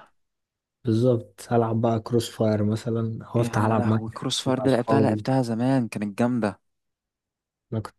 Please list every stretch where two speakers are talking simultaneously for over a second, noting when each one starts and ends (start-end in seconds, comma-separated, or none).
3.4-5.2